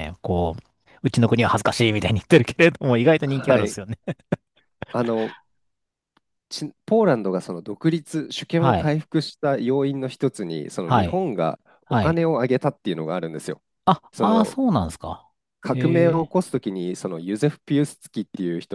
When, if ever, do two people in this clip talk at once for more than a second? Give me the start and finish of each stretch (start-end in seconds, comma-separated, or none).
none